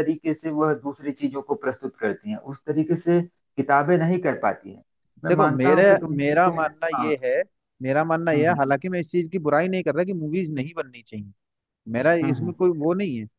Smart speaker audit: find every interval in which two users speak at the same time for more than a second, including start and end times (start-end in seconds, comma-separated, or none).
5.3-7.1